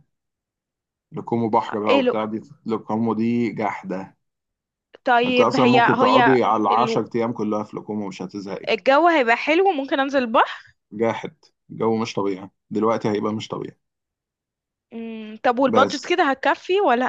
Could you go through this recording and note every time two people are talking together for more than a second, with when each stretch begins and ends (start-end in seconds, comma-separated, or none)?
5.3-7.0